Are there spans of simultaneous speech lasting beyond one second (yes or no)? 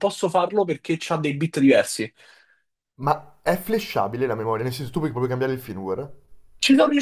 no